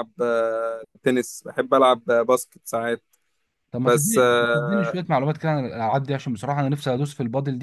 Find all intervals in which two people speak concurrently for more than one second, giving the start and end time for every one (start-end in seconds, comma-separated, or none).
none